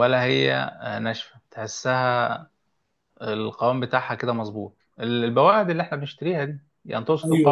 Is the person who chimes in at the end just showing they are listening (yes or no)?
no